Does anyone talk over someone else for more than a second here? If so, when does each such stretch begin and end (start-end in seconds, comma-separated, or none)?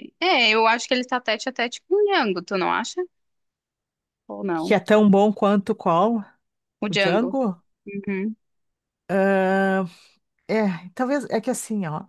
none